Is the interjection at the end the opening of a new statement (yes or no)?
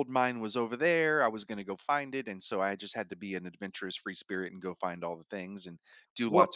no